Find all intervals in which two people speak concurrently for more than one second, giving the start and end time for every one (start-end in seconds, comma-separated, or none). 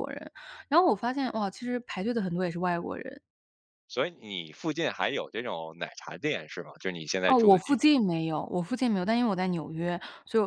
none